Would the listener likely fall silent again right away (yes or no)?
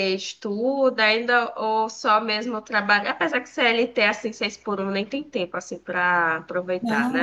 no